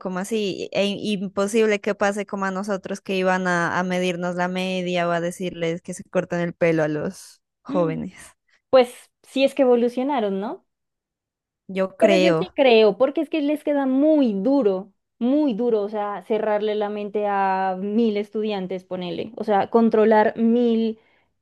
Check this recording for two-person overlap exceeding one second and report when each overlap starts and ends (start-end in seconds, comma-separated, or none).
none